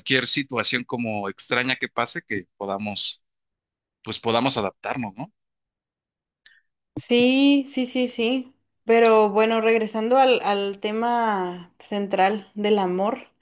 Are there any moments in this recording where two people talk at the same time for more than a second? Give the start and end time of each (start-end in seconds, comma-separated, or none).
none